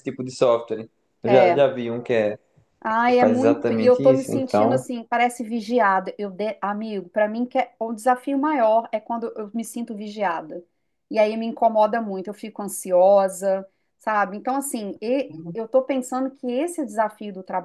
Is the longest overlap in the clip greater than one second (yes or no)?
yes